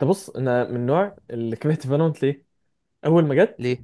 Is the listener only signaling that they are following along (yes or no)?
yes